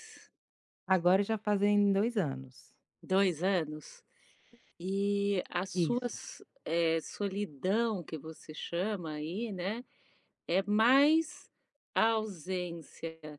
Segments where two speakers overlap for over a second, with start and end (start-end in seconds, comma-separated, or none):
none